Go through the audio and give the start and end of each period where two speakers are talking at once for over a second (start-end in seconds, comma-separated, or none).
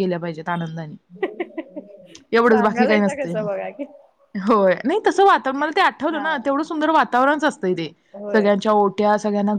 2.5-3.8